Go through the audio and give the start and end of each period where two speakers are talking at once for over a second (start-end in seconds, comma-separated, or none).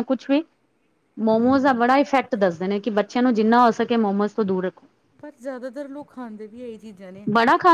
none